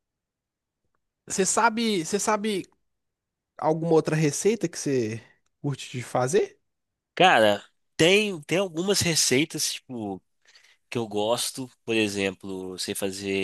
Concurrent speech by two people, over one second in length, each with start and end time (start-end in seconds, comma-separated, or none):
none